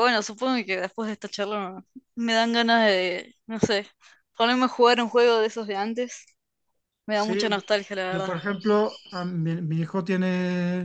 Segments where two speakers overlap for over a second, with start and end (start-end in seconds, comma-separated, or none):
none